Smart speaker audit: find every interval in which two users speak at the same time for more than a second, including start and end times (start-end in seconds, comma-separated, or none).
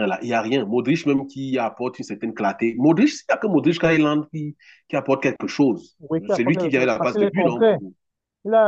6.0-7.8